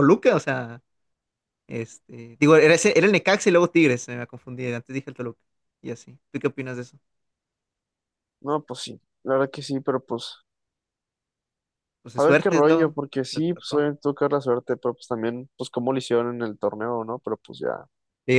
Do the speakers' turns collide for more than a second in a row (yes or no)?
yes